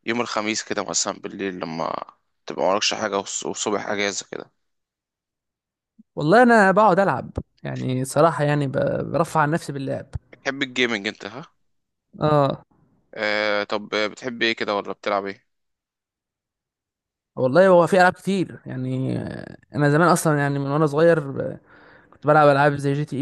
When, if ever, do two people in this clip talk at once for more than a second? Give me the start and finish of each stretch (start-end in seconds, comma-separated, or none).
none